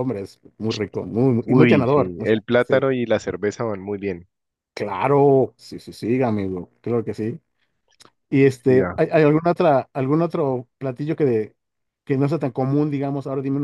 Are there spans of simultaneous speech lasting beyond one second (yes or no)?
yes